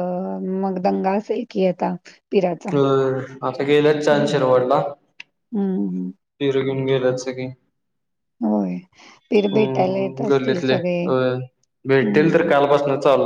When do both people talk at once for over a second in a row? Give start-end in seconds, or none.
9.5-10.7